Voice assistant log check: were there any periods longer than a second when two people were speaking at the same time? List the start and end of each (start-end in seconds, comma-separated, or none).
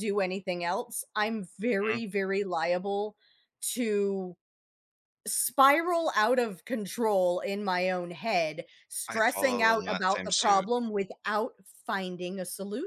9.1-10.7